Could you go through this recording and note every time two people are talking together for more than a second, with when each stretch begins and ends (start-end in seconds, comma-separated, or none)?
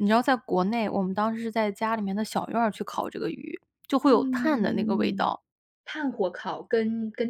4.1-5.3